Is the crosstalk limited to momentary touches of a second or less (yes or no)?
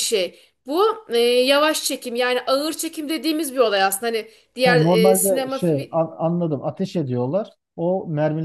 no